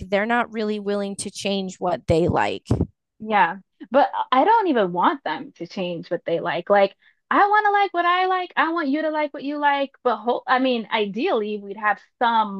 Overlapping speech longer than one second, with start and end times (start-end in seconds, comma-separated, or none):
none